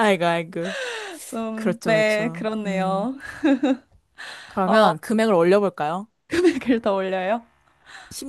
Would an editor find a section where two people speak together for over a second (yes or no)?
yes